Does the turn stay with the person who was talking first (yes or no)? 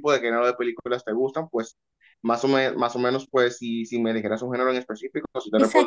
no